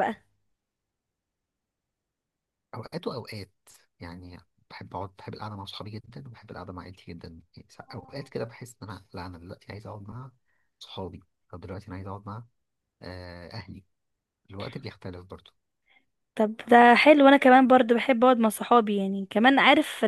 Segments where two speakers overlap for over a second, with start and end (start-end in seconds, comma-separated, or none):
none